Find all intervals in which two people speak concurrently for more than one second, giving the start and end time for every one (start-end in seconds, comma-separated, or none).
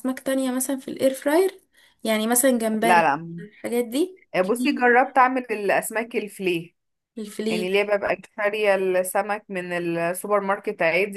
none